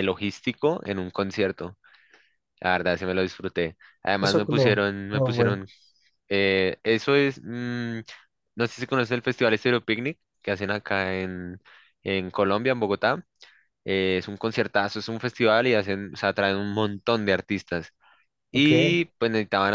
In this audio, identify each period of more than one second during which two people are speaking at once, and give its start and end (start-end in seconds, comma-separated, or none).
4.2-5.6